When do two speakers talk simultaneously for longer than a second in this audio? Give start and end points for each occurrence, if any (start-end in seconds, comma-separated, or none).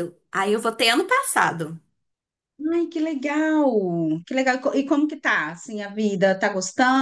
none